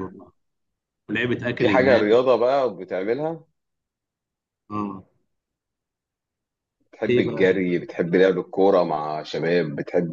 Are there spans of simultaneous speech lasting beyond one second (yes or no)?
no